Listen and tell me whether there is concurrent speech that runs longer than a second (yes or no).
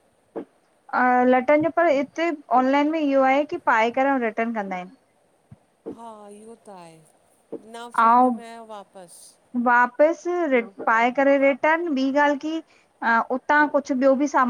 no